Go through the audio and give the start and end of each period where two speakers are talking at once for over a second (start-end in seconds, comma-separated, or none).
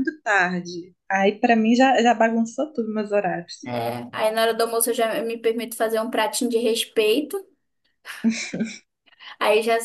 none